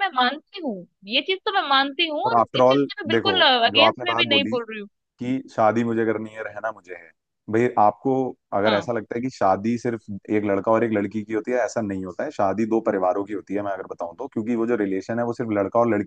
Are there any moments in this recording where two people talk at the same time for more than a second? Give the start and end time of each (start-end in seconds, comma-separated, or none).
2.3-4.6